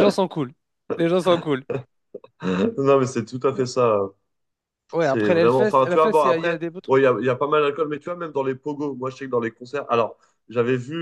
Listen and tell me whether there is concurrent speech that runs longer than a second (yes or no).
yes